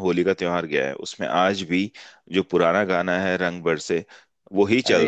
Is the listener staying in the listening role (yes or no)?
yes